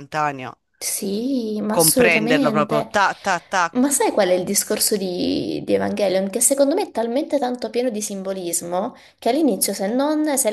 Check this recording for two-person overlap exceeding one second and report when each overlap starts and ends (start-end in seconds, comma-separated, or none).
1.7-2.9